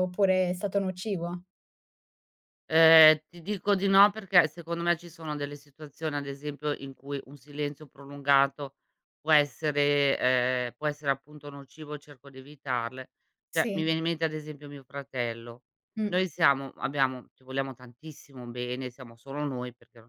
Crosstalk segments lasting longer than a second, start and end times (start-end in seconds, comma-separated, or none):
none